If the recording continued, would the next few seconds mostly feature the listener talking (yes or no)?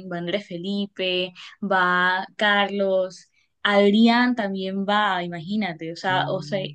no